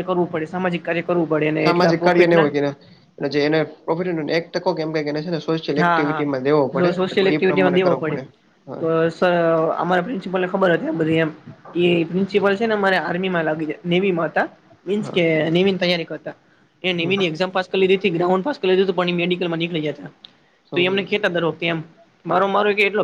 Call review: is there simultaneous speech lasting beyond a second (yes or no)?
yes